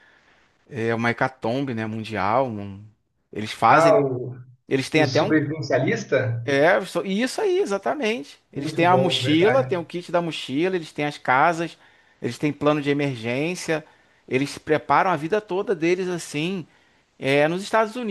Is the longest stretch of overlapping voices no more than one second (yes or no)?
no